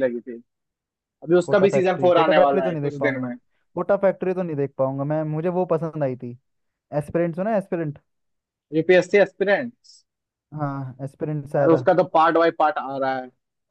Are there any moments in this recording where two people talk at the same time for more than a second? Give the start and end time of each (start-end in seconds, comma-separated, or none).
1.4-3.3